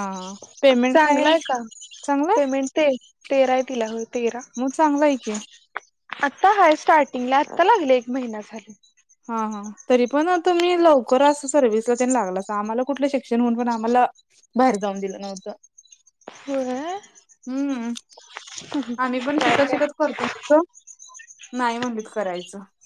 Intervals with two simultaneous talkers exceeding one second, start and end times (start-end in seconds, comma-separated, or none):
none